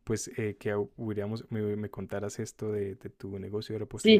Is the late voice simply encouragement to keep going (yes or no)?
no